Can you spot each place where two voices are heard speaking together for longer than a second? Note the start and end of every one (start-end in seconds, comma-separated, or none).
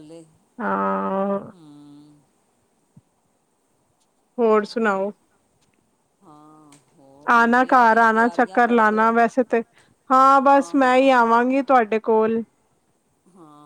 7.3-9.1